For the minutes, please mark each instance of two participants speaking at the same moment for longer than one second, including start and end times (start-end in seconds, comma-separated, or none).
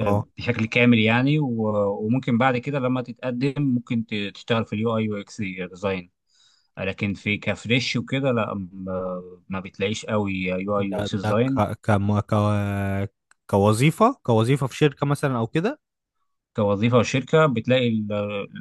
none